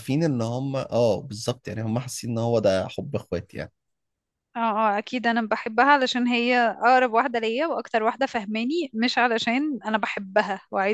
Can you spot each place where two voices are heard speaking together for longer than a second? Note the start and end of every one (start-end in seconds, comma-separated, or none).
none